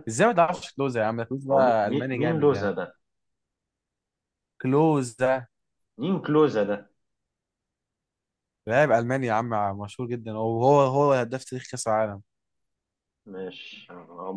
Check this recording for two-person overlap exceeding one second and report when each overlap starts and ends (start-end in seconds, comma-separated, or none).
1.5-2.7